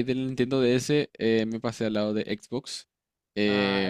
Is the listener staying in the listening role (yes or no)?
yes